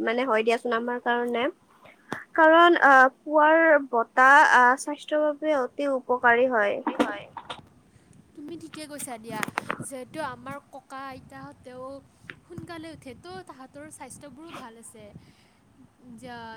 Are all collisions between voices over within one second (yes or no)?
yes